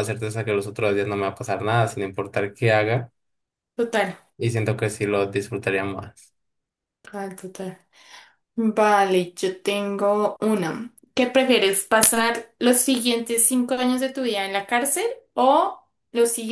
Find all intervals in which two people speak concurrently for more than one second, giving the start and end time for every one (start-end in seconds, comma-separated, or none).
none